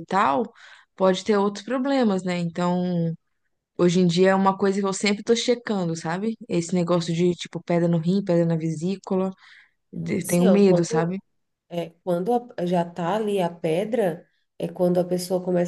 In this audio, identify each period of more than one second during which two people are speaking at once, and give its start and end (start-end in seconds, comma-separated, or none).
9.9-11.2